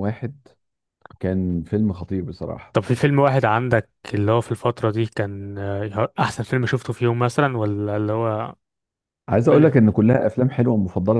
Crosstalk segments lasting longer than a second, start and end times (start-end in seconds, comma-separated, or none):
none